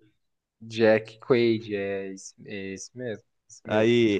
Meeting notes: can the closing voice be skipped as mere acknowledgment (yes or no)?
no